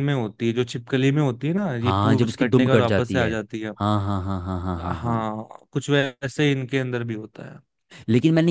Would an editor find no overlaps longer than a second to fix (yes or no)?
no